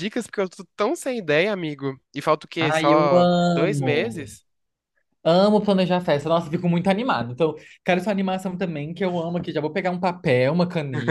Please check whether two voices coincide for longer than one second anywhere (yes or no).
yes